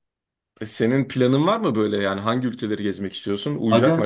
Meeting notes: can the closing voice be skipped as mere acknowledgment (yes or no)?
no